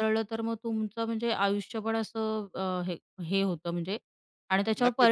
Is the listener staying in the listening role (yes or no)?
no